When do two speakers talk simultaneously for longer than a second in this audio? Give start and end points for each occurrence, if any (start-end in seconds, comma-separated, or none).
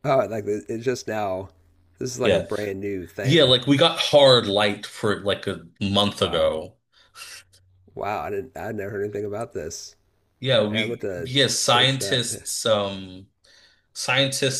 10.7-12.2